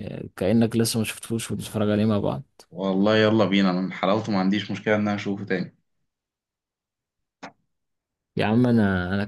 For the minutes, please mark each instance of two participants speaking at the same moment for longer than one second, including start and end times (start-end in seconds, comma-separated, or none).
none